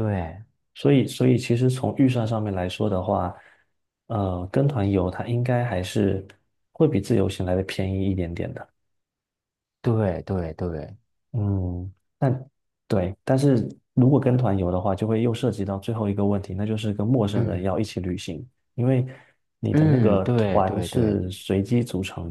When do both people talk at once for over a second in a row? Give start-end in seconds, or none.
19.7-21.2